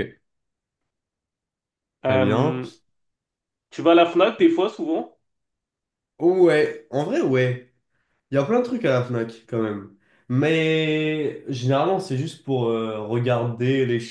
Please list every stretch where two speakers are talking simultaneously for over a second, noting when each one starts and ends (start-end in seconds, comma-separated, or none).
none